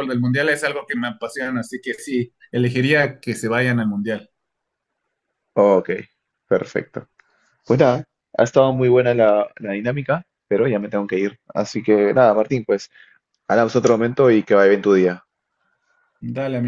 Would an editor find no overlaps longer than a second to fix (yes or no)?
yes